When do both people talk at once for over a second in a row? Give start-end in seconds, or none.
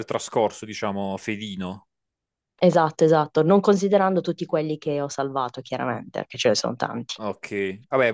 none